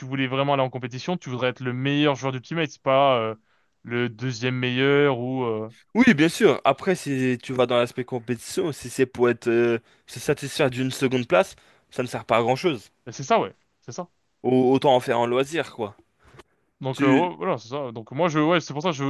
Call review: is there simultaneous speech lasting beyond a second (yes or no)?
no